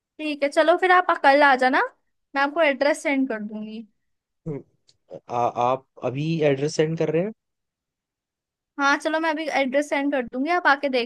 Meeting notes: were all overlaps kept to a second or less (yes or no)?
yes